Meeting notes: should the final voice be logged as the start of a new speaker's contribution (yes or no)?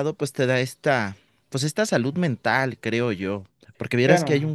no